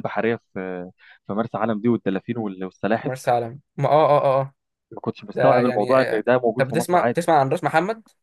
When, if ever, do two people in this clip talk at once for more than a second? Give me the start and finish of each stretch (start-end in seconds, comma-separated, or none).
5.3-7.3